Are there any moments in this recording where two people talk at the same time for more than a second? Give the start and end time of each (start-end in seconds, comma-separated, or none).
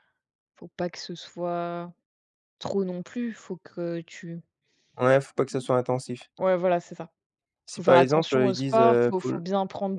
7.7-9.4